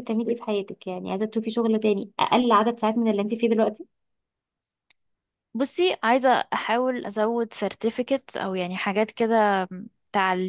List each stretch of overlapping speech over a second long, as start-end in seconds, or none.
none